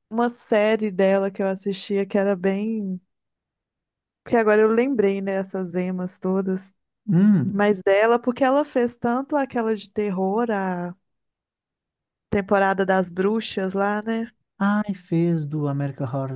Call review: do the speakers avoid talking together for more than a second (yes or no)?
yes